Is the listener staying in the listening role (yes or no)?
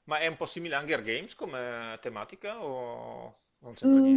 no